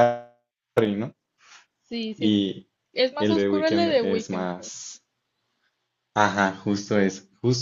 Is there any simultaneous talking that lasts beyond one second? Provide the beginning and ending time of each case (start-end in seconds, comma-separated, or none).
3.2-4.7